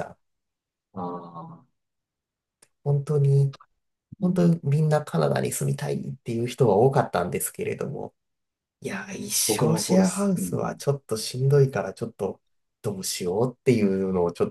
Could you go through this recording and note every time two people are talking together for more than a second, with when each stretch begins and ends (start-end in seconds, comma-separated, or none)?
9.5-10.8